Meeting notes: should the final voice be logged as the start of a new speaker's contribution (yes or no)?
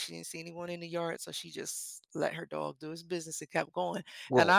no